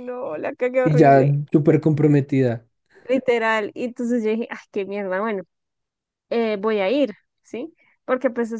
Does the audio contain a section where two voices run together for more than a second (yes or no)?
no